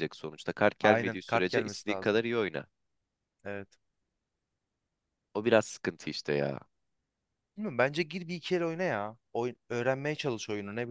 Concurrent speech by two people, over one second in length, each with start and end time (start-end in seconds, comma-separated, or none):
0.8-2.2